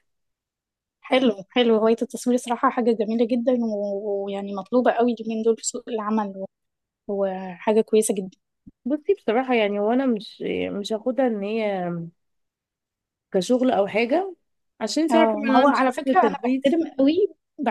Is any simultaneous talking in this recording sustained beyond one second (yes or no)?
yes